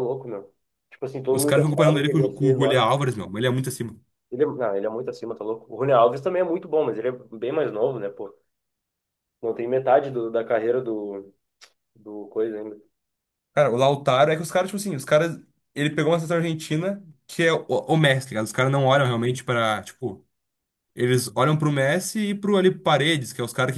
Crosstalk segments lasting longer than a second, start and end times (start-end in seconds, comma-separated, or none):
1.3-2.8